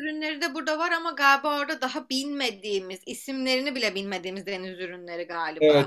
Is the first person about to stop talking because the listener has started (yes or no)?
yes